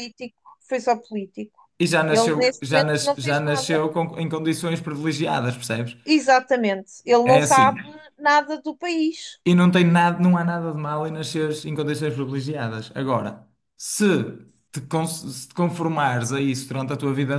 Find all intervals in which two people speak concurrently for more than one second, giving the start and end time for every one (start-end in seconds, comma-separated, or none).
2.1-3.8